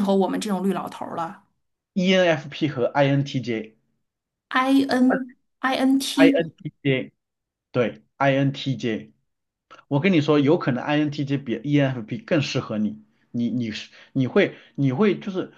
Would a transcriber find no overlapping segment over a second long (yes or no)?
yes